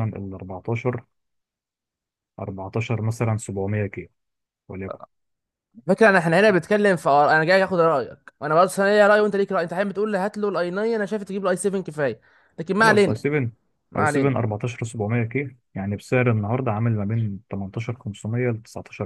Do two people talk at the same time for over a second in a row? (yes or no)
no